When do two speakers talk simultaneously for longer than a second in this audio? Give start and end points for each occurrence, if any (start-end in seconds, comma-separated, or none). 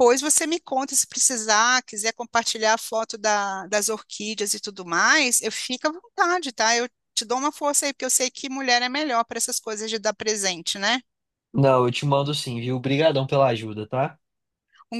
none